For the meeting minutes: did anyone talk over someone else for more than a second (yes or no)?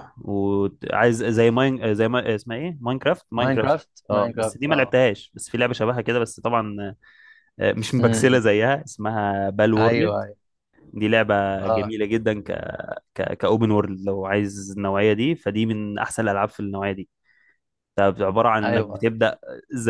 yes